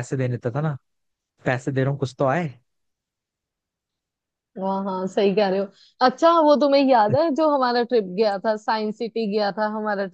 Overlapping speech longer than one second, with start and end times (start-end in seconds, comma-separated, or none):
none